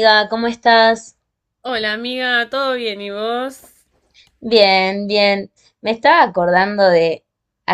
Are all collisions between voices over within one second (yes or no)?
yes